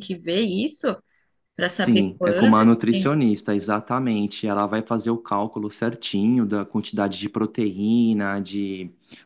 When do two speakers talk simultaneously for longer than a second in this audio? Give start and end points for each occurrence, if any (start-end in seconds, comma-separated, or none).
1.7-3.2